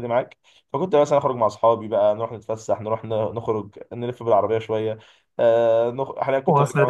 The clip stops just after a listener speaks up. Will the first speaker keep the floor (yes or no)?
no